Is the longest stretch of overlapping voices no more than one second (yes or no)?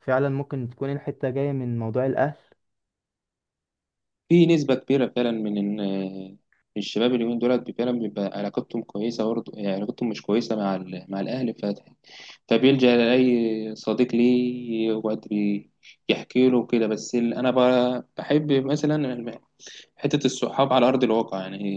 yes